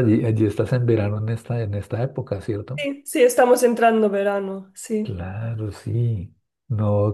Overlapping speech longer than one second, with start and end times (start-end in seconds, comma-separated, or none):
none